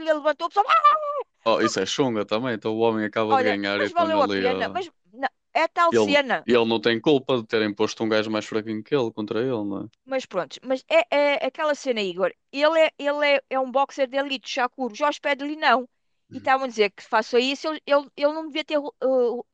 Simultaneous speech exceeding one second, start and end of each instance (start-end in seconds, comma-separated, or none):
3.3-4.8